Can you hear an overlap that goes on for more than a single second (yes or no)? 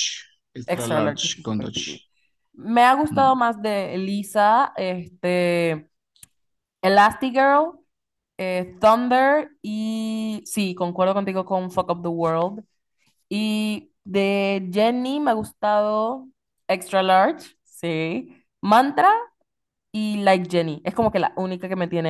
yes